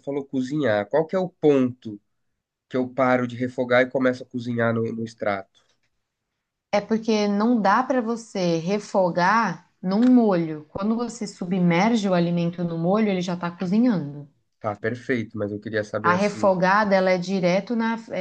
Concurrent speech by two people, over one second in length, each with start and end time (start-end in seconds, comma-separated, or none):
none